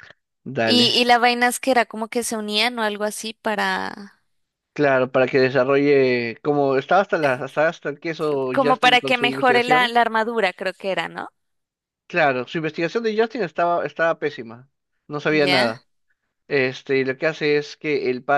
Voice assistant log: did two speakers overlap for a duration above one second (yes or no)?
yes